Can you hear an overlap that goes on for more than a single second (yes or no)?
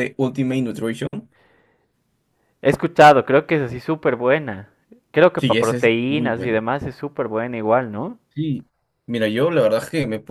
yes